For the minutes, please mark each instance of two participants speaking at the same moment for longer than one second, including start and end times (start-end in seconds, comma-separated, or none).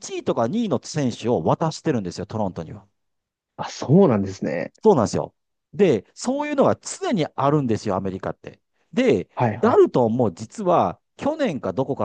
none